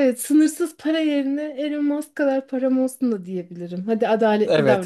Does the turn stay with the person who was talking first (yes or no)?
no